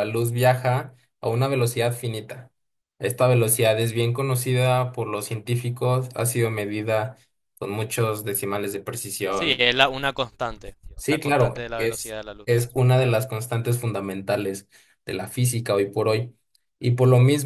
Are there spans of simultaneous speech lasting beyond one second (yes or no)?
yes